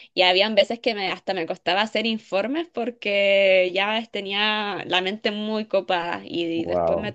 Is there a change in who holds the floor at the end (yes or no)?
no